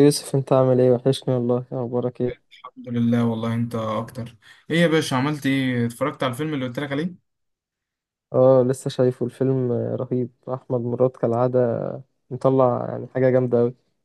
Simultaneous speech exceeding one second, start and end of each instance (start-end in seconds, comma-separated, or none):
none